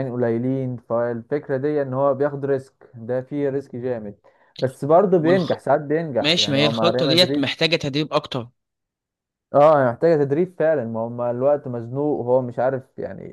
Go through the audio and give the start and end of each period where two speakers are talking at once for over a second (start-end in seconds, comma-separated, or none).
6.2-7.6